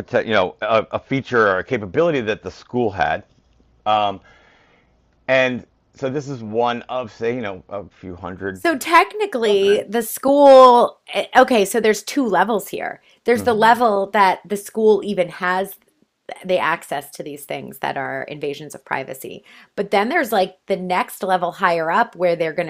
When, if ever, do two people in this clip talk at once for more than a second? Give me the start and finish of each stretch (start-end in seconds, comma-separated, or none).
none